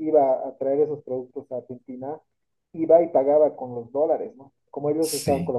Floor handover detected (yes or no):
no